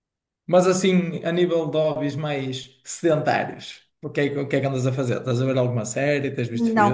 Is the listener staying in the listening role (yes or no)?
no